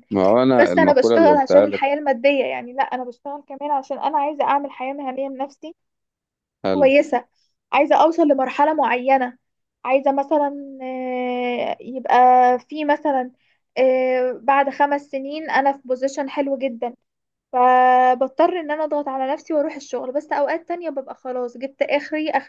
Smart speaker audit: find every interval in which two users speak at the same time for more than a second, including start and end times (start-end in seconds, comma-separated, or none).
0.6-1.8